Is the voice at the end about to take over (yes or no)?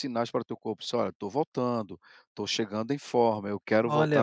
yes